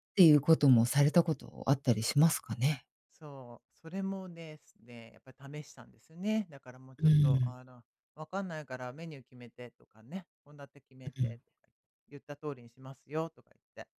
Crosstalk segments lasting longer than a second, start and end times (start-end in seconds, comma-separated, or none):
none